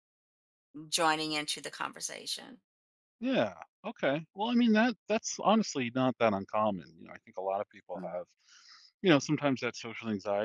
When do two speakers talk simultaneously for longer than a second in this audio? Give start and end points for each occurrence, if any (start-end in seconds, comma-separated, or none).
none